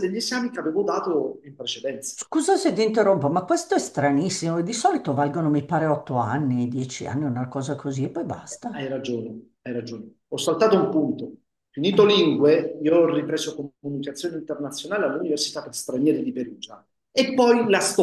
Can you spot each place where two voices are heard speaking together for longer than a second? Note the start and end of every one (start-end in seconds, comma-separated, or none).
none